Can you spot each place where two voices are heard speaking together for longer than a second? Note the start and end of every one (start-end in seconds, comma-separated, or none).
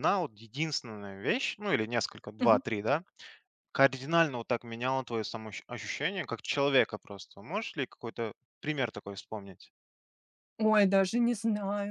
none